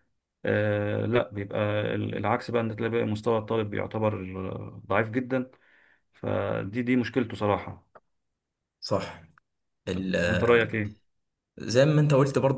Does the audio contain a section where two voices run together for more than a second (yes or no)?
no